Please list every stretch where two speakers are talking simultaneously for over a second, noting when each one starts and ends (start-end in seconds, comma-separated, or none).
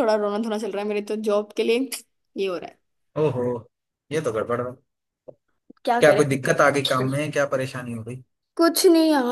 none